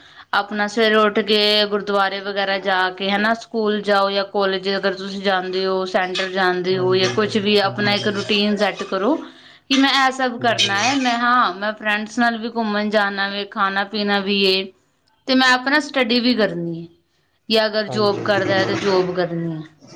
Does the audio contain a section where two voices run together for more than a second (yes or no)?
yes